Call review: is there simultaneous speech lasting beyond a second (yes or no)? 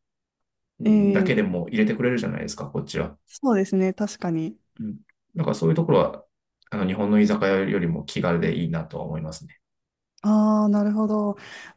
no